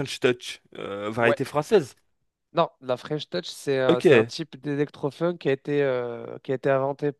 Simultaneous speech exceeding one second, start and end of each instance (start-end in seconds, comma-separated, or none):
none